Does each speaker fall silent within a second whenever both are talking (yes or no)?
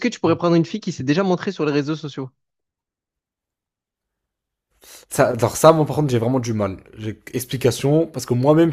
yes